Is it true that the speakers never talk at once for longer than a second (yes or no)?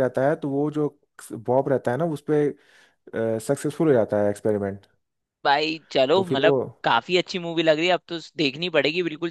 yes